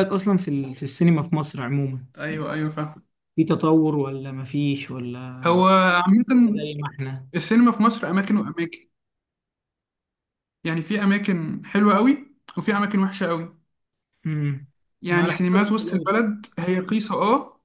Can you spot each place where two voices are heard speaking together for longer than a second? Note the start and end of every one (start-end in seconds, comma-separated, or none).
15.1-16.4